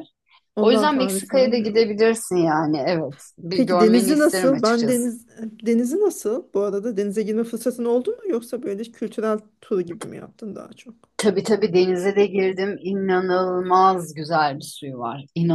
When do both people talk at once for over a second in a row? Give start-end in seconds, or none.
0.6-1.9, 3.5-5.0